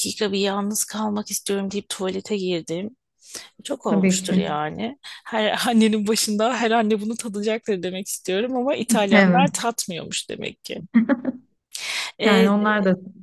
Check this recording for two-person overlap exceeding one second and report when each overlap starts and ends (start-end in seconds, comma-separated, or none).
none